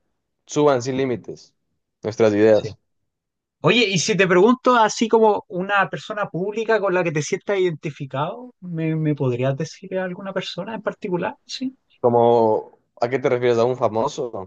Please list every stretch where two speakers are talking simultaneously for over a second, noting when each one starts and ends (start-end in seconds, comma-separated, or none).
none